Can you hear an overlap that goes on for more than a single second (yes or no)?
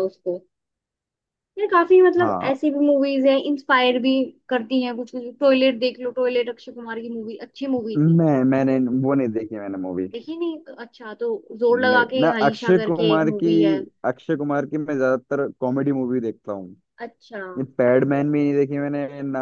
yes